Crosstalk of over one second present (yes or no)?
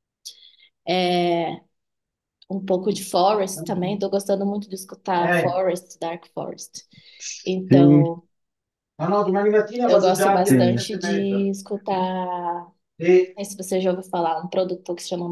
yes